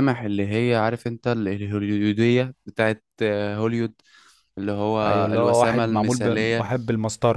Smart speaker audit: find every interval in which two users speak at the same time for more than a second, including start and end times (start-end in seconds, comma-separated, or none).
5.0-6.7